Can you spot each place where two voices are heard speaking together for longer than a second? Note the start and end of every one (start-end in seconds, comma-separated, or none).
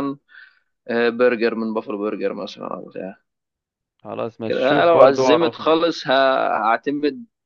4.4-5.8